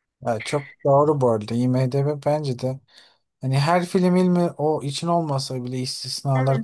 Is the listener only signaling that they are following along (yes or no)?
yes